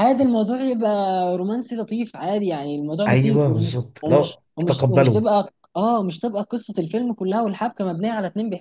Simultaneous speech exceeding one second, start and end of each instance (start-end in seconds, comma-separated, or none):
3.1-5.2